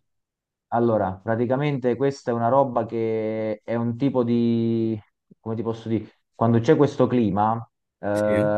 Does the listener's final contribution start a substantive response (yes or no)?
no